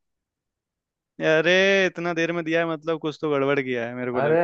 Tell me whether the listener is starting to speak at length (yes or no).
yes